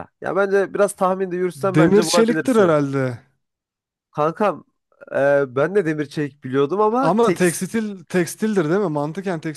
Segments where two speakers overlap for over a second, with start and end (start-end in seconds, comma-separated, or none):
1.6-2.8